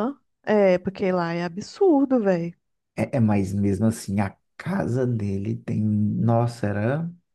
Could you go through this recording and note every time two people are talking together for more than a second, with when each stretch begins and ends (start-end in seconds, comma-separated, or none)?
none